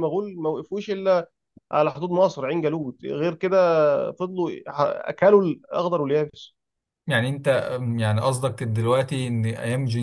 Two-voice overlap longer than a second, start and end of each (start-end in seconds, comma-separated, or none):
none